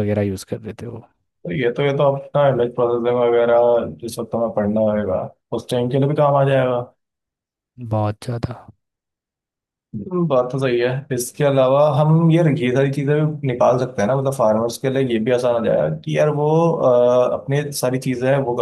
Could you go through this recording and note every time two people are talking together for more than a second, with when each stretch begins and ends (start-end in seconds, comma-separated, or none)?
none